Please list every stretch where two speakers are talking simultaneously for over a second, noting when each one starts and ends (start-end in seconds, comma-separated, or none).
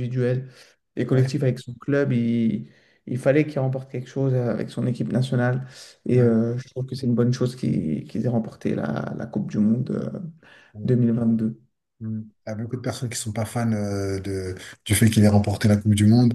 none